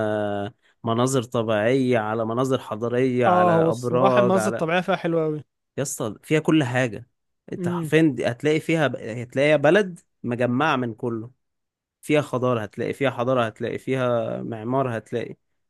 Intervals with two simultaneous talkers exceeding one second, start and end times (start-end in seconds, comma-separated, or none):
3.3-4.7